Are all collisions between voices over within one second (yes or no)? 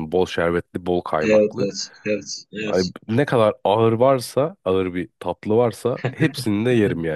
yes